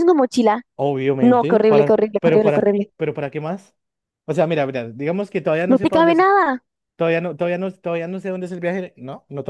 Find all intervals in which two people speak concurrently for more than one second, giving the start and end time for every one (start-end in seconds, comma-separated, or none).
1.2-2.9